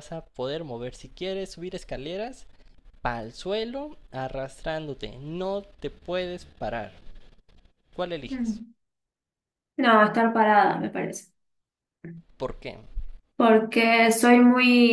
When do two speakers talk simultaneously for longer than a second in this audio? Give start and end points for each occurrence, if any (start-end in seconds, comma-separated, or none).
none